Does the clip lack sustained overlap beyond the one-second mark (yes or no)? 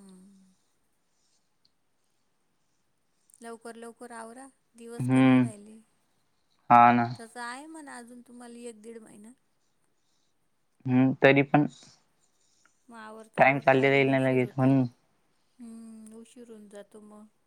no